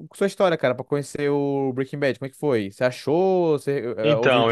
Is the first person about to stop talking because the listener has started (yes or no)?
yes